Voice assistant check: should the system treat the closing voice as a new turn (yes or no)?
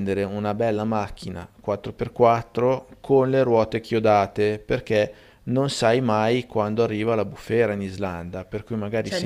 yes